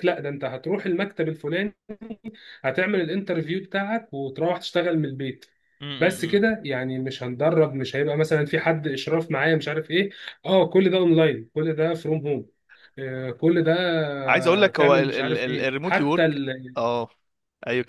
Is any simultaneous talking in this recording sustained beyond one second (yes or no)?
yes